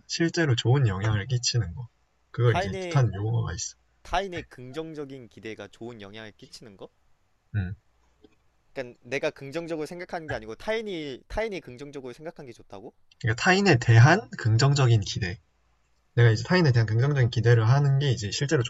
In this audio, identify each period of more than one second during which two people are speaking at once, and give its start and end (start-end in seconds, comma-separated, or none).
none